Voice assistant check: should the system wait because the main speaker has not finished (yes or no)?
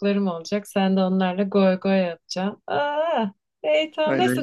yes